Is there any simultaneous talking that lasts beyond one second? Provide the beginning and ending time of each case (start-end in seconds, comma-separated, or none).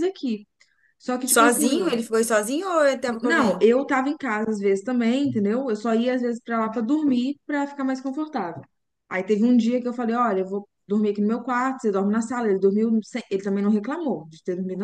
none